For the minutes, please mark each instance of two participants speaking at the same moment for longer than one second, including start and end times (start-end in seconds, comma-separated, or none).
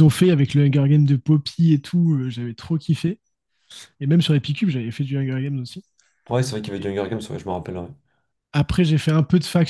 none